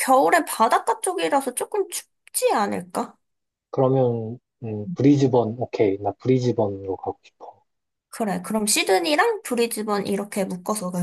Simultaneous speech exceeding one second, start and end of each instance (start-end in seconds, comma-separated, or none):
none